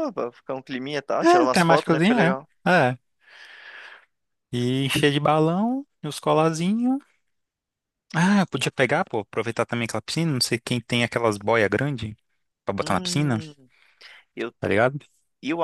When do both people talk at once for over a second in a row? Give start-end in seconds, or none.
1.2-2.5